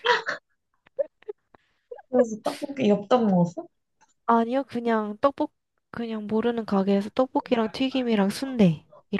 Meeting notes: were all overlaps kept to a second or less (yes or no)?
yes